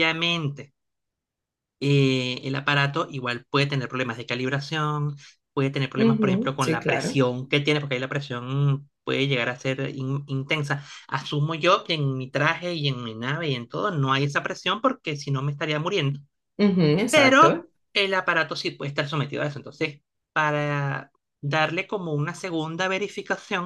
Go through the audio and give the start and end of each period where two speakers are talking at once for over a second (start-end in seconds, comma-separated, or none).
6.0-7.2